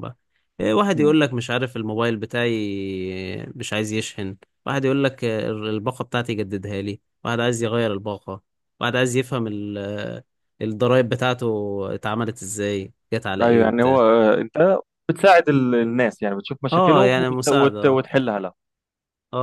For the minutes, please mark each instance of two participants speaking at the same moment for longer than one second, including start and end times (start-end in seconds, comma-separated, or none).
16.7-18.0